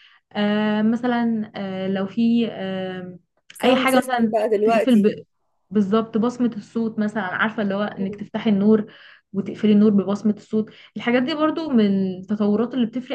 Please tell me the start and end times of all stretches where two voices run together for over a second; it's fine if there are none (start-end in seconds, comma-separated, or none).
3.6-5.1